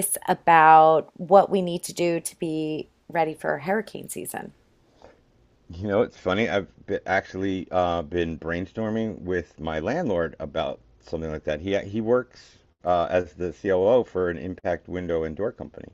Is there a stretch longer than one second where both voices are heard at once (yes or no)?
no